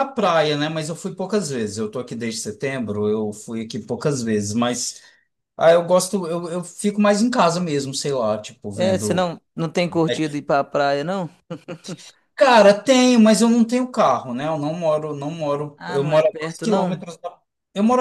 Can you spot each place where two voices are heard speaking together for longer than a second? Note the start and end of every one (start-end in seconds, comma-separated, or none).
15.8-17.0